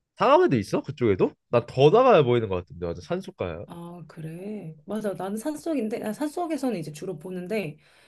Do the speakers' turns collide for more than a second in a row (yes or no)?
no